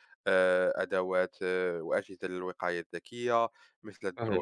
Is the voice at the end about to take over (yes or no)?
no